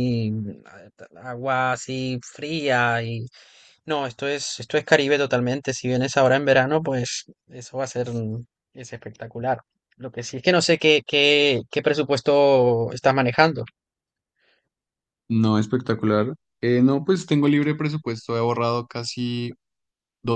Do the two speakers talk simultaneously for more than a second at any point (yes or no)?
no